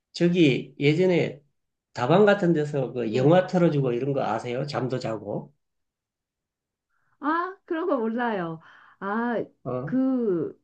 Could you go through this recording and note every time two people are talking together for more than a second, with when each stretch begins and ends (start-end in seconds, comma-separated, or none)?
none